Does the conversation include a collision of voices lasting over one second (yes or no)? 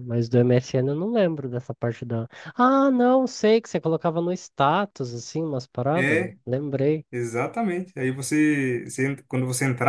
no